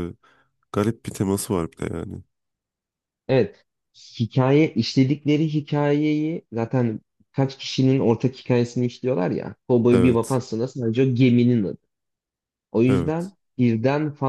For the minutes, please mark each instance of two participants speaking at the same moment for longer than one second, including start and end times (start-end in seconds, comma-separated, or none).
none